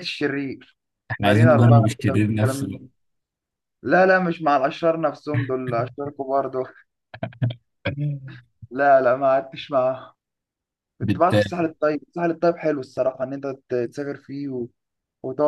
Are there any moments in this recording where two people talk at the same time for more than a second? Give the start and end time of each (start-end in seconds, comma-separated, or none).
1.2-2.9